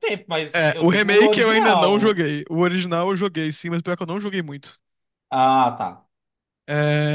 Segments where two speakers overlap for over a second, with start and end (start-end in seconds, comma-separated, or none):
0.6-2.2